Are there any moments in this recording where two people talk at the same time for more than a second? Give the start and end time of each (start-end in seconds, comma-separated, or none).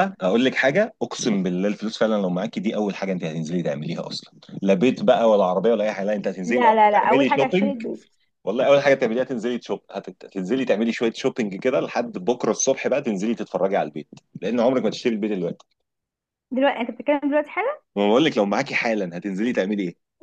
6.5-7.8